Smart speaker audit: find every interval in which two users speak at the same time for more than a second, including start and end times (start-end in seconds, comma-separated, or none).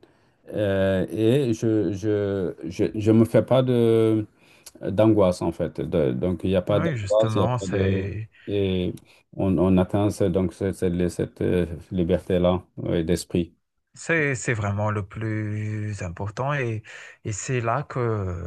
6.7-8.1